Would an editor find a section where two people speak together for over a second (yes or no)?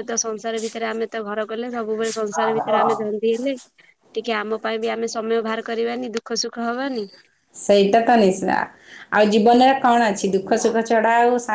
no